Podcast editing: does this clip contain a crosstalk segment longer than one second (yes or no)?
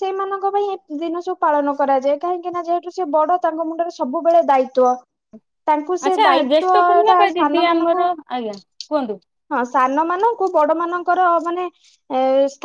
yes